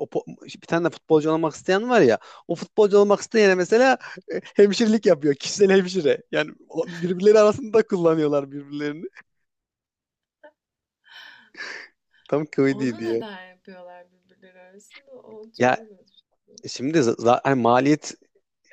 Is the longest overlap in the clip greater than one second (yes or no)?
no